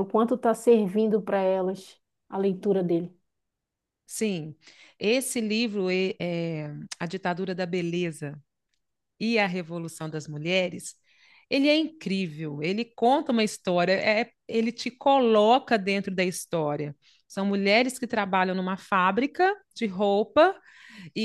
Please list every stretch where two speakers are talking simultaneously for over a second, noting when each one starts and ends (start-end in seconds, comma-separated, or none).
none